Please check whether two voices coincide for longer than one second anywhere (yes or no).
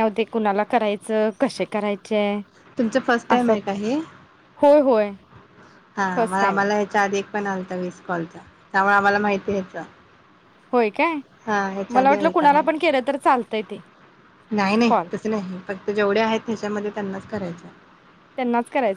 no